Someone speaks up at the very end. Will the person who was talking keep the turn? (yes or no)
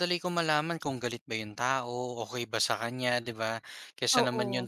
yes